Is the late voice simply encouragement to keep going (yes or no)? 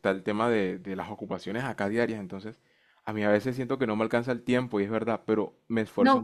no